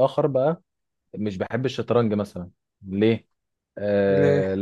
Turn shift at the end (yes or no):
no